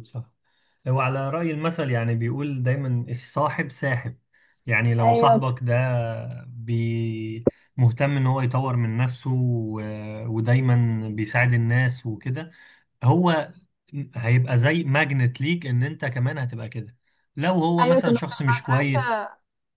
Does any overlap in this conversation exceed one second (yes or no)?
yes